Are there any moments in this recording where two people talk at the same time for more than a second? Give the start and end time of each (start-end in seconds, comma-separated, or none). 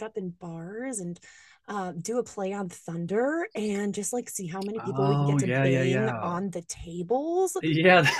4.8-6.4